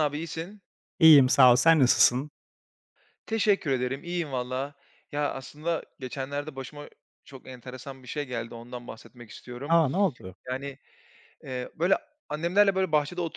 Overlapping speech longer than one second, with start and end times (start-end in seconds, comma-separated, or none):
none